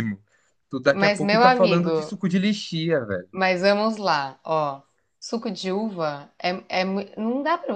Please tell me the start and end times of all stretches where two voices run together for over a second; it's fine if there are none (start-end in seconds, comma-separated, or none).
0.9-2.2